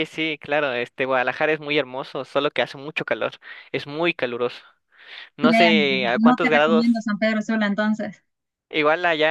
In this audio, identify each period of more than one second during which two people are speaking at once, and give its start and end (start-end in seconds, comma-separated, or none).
5.4-7.0